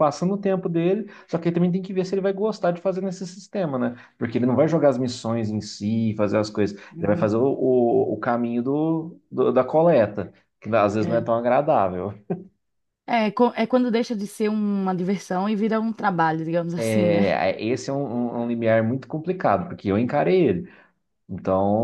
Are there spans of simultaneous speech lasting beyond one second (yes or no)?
no